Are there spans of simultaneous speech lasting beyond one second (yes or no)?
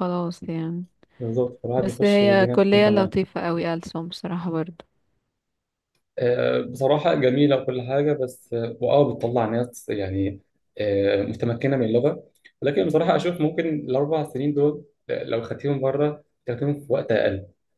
yes